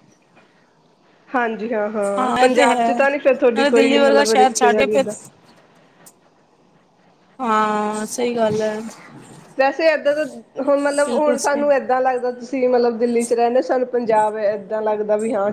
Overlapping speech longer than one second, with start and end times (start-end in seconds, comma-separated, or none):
2.4-5.0